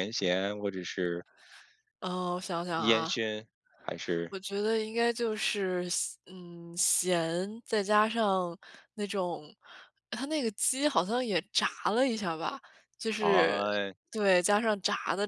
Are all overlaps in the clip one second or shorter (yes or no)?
yes